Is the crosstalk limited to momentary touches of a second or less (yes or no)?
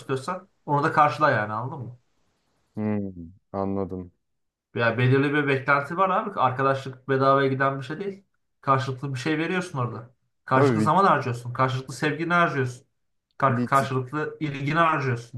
yes